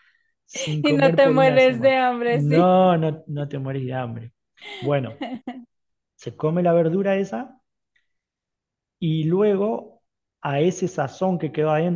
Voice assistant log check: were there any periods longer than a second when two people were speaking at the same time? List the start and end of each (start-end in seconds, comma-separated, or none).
0.8-2.8